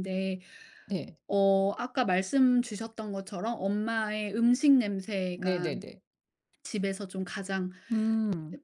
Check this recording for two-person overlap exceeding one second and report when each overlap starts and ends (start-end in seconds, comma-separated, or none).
none